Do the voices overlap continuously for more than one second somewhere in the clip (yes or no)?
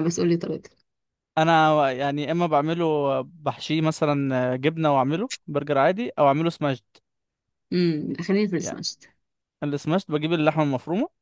no